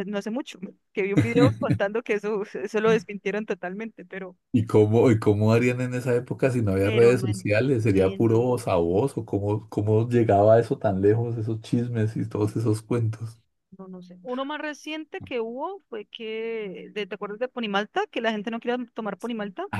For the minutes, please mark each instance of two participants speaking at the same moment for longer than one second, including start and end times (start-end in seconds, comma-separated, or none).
6.8-8.4